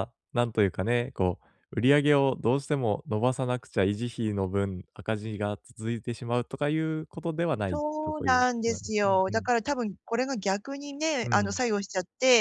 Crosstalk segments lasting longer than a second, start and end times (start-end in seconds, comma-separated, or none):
7.7-9.5